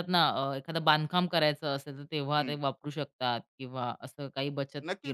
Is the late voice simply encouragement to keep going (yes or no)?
no